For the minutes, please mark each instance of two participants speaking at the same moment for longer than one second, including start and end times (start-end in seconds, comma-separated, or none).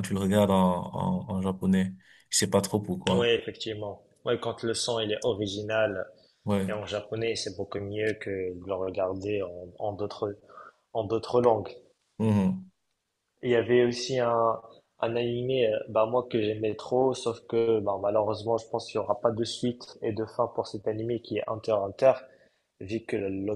none